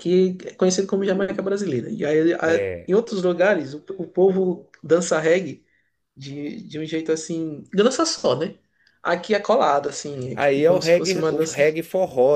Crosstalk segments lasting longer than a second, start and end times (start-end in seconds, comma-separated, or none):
10.3-11.6